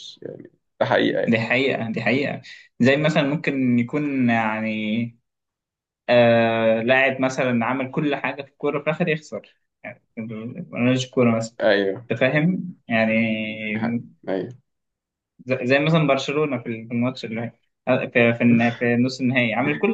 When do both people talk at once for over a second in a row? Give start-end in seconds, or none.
none